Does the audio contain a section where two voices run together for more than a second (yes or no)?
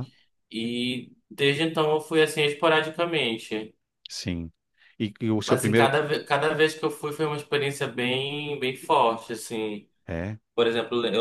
no